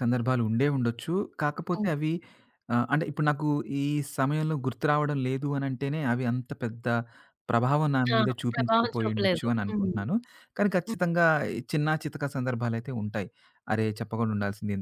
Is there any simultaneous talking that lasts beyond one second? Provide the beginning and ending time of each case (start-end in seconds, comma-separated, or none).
8.2-9.9